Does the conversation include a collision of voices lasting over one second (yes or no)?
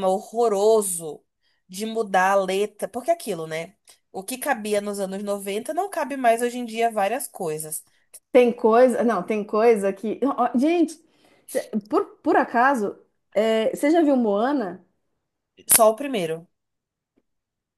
no